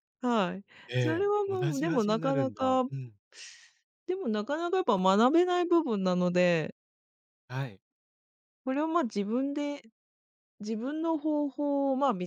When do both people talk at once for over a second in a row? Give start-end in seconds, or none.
0.9-2.8